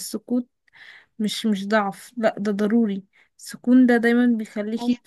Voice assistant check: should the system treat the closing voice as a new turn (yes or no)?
no